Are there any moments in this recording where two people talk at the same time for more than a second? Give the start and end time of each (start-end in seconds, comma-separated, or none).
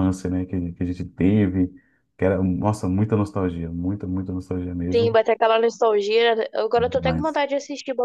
none